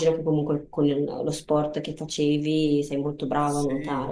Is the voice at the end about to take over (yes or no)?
yes